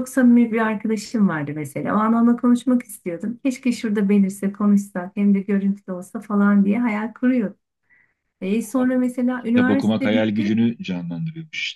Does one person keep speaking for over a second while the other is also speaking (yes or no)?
yes